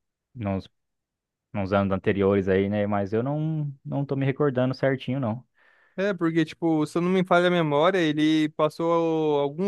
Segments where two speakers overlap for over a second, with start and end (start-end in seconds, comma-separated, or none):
none